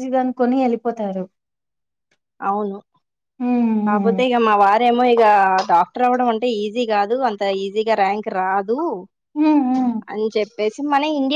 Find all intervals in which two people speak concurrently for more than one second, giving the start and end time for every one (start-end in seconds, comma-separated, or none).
none